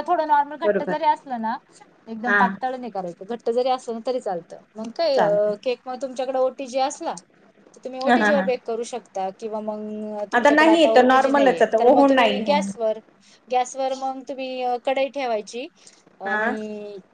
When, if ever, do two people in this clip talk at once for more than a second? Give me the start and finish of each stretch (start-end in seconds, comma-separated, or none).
10.5-12.6